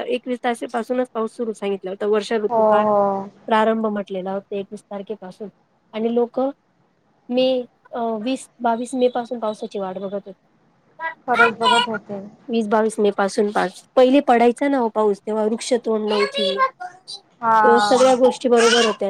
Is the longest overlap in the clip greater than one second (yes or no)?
no